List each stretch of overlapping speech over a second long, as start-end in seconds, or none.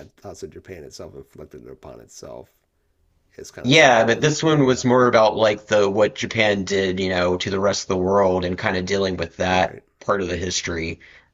3.6-4.9